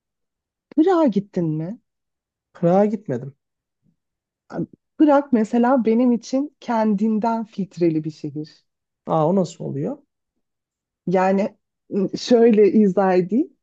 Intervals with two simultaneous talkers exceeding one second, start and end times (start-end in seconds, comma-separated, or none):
none